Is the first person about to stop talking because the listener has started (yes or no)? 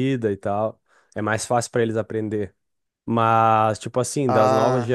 no